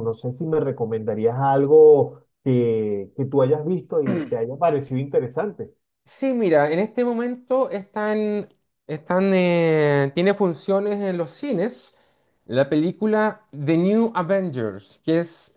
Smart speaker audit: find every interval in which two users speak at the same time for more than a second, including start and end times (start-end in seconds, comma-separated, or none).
none